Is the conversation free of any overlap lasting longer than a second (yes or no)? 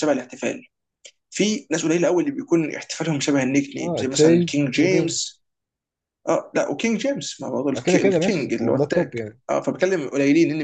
no